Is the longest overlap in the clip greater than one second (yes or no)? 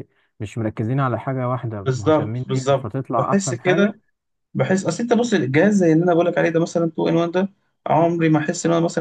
yes